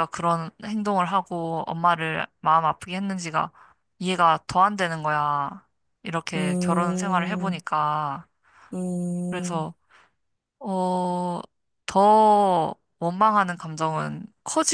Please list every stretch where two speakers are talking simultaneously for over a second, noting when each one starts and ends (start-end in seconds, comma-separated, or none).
6.3-7.6